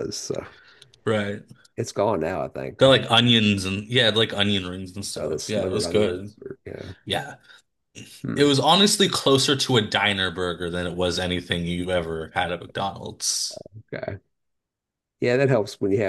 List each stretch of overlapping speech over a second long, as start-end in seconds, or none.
5.2-6.3